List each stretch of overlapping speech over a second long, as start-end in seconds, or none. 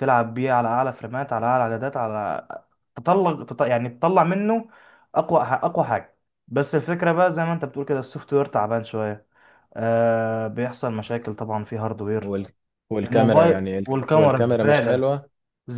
13.0-15.1